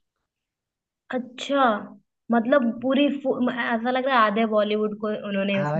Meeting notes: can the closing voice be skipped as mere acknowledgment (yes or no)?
no